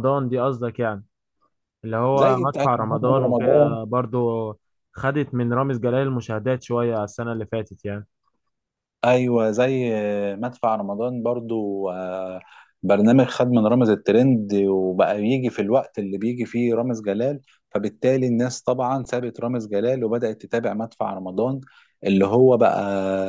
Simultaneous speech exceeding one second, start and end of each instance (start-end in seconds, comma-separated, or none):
2.1-3.8